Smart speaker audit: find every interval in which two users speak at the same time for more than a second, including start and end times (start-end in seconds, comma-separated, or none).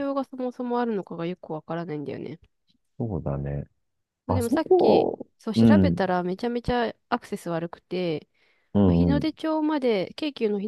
4.3-6.1